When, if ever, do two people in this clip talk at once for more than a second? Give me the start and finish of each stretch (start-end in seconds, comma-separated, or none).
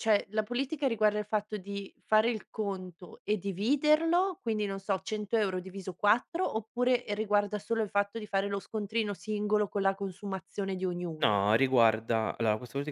none